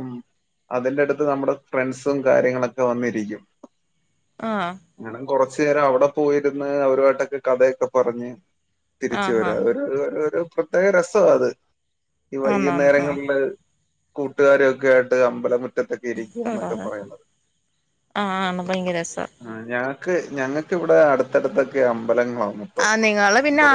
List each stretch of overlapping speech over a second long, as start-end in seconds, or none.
none